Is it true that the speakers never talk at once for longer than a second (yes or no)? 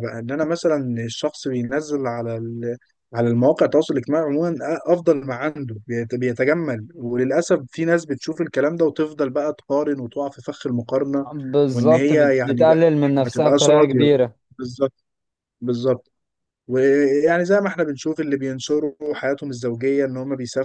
no